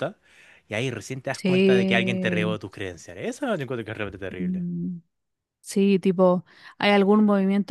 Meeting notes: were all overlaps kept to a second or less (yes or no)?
no